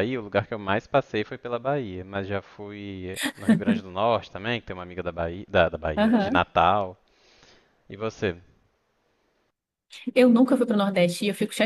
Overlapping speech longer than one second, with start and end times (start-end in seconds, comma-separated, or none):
none